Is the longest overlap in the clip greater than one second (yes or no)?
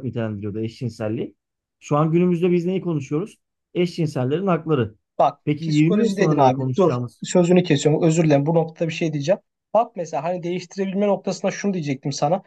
yes